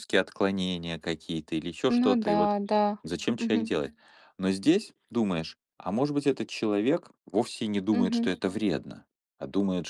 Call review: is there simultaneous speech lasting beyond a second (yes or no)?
no